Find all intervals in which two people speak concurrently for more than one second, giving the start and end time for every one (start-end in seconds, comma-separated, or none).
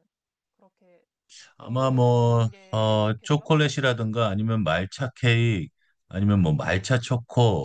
1.6-3.5